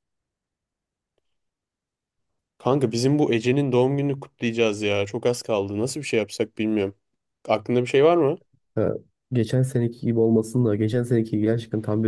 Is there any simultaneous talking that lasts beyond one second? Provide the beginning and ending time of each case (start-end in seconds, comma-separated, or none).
none